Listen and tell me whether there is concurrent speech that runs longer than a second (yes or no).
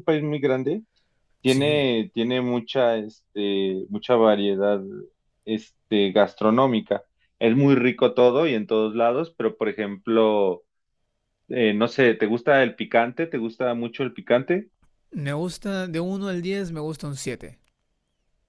no